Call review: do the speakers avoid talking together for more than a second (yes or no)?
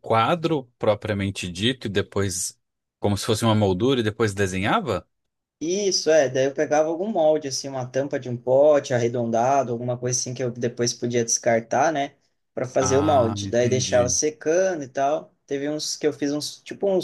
no